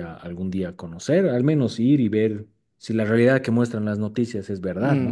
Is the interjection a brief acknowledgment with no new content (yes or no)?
no